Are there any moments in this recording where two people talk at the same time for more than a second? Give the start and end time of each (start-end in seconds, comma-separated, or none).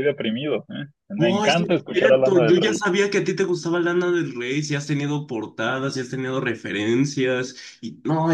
1.1-2.8